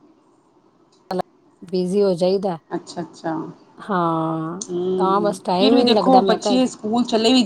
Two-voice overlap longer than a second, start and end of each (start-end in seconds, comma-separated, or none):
4.7-6.5